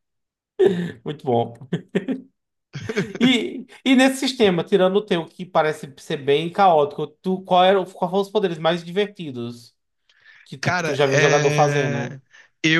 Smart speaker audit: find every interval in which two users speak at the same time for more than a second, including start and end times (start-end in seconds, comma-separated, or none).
10.6-12.2